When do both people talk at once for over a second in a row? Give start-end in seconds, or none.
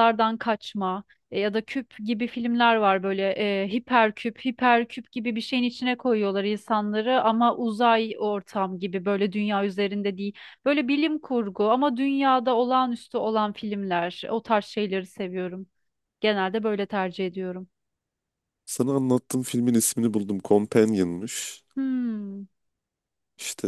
none